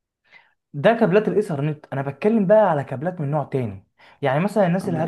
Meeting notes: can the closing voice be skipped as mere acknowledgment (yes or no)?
yes